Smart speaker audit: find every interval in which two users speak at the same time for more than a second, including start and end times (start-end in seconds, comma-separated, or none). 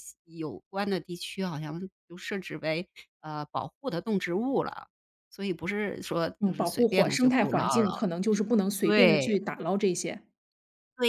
6.4-8.0